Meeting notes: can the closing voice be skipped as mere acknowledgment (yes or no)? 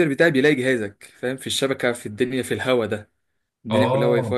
yes